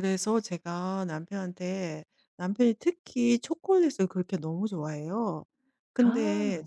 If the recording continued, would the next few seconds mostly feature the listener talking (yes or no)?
no